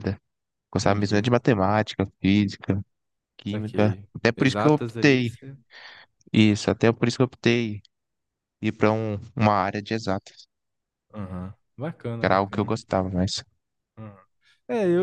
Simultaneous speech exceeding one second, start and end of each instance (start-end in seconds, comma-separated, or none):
3.5-5.3